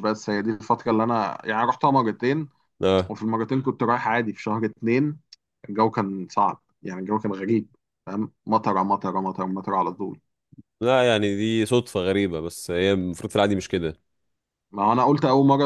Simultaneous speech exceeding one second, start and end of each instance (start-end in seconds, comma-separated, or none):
none